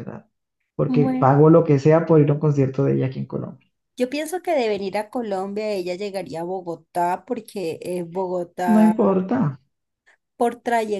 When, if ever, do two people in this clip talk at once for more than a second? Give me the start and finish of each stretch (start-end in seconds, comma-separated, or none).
none